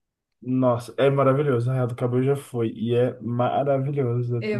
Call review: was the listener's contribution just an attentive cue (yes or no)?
yes